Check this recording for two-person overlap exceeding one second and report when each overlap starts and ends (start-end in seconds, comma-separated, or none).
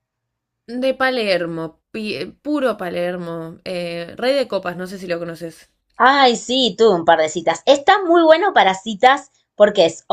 none